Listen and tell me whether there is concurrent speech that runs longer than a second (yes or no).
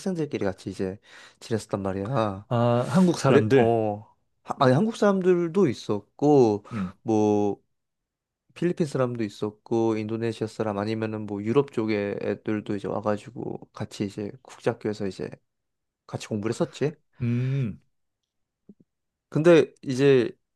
no